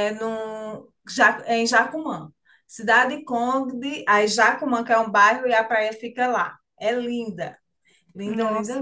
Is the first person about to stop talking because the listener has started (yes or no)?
yes